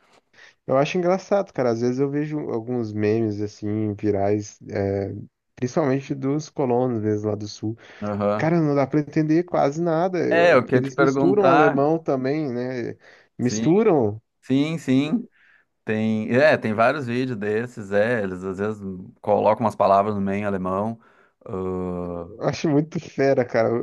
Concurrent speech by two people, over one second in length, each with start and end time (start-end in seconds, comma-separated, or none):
10.3-11.8